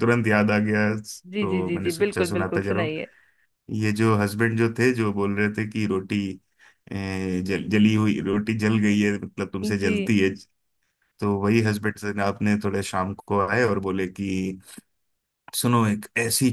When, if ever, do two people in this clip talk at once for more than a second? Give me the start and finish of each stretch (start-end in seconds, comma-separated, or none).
1.4-2.9